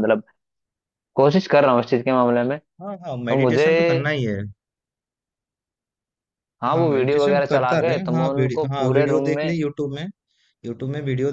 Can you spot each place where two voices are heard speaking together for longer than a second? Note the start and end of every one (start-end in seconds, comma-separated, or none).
6.7-9.6